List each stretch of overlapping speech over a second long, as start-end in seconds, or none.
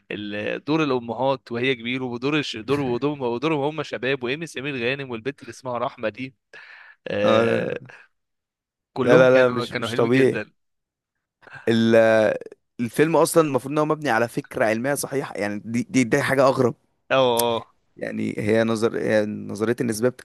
9.0-10.4